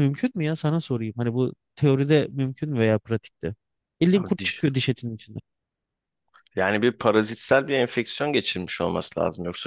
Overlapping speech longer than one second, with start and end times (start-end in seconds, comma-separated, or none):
none